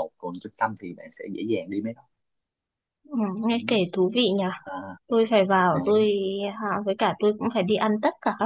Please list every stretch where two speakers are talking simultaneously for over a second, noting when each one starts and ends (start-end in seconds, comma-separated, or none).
none